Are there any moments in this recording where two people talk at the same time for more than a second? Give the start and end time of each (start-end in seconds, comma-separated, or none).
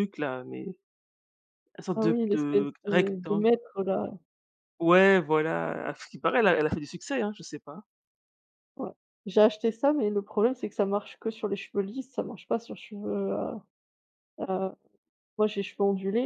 1.9-3.5